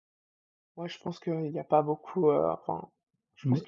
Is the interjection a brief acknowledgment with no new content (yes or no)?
yes